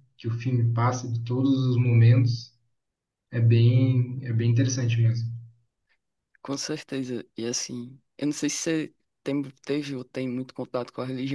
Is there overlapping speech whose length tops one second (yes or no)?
no